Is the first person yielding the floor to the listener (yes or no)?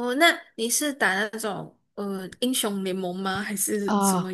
yes